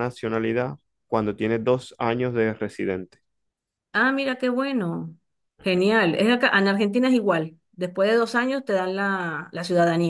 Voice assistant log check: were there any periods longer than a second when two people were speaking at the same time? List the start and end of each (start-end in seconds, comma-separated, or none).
none